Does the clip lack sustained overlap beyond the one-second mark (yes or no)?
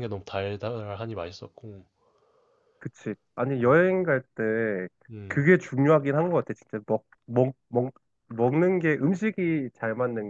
yes